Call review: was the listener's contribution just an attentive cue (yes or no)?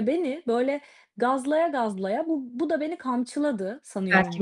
no